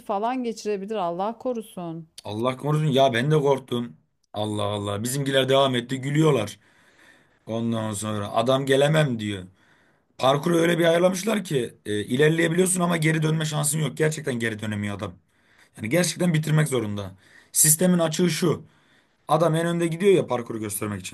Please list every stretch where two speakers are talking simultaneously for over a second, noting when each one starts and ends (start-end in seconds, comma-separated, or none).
none